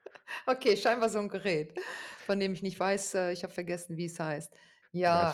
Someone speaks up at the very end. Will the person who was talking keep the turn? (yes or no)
yes